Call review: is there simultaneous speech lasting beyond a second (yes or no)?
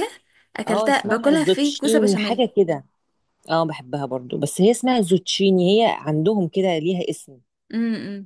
yes